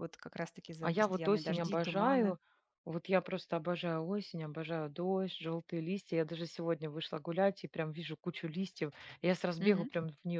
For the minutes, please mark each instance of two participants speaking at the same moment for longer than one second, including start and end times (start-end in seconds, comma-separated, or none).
0.8-2.4